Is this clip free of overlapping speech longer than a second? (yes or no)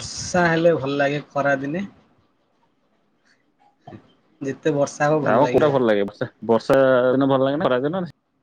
yes